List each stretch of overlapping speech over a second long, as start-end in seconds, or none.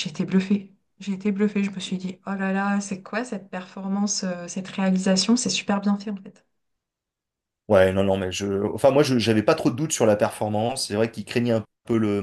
none